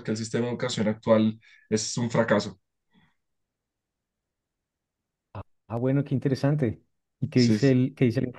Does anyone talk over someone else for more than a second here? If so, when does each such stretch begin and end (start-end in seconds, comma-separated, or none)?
none